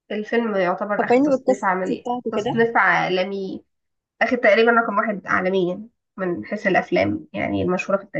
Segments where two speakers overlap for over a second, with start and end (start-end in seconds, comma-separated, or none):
1.0-2.6